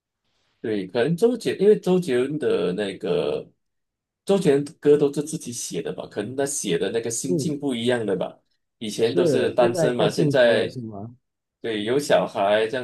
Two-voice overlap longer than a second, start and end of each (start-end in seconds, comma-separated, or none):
9.0-10.8